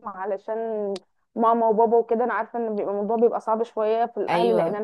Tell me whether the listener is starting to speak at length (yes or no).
no